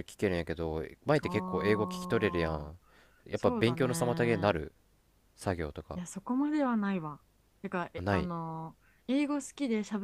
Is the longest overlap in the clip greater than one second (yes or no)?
yes